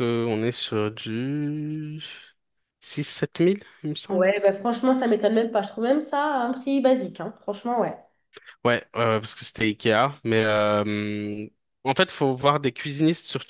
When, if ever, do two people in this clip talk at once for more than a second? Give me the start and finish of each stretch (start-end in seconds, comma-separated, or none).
none